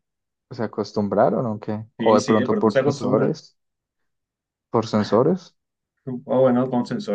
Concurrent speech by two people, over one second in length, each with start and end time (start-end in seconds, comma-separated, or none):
2.0-3.4